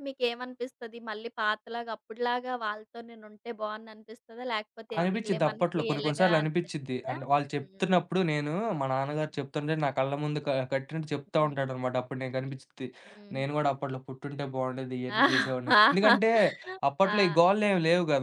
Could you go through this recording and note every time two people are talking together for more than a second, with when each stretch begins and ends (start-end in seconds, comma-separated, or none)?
5.0-7.2